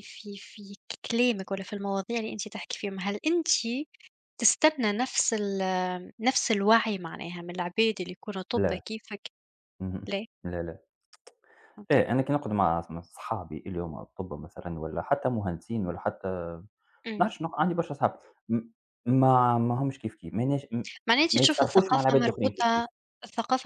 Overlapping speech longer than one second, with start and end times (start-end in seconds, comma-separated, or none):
21.3-22.9